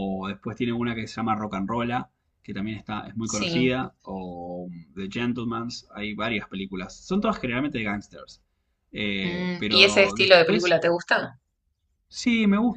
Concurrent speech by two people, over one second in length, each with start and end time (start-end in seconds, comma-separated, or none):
9.2-10.8